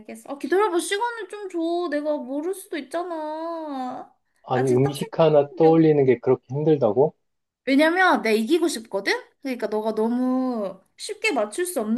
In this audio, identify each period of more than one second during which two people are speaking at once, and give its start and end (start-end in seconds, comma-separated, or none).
4.5-5.8